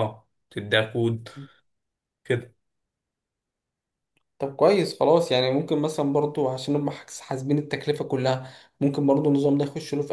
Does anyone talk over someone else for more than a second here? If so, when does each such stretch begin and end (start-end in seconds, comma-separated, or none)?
none